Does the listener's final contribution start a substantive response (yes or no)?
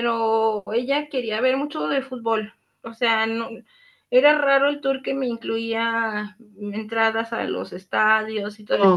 no